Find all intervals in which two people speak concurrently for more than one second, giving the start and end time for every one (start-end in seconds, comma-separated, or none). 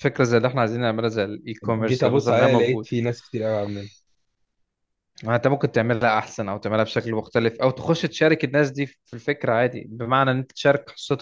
1.6-2.9